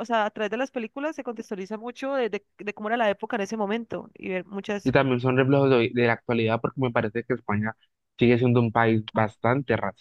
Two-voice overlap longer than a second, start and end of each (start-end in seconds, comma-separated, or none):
none